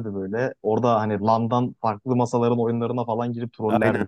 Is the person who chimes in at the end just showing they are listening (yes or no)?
no